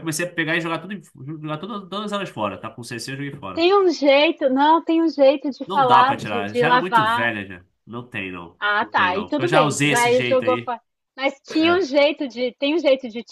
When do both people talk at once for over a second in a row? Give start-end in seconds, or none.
5.7-7.3, 8.6-10.7